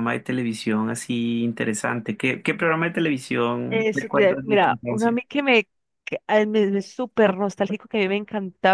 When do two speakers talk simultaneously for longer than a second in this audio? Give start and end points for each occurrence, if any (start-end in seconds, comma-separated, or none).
3.7-5.2